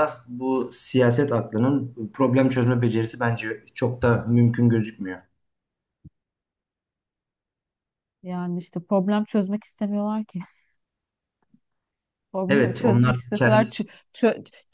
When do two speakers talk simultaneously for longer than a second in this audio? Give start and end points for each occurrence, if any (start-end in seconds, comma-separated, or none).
12.5-13.8